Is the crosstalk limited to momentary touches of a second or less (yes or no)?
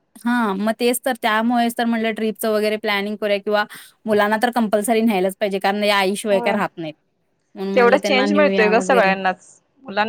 no